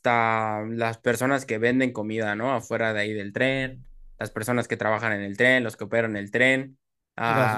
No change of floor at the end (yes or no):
no